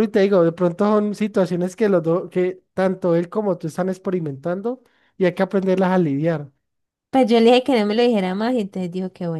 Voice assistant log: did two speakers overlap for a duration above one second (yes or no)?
no